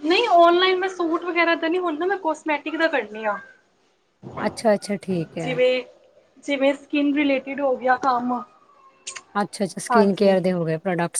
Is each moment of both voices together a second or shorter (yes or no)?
yes